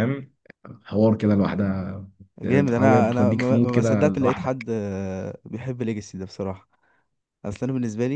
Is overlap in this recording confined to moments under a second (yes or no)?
no